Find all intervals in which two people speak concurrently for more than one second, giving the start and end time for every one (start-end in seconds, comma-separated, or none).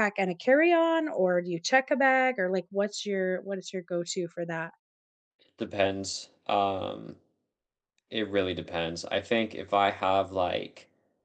none